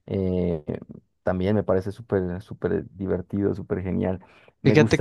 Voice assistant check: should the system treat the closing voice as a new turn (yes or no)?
no